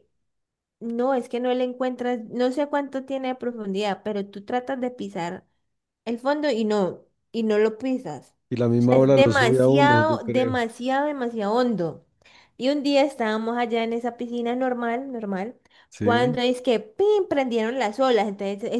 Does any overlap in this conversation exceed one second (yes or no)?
yes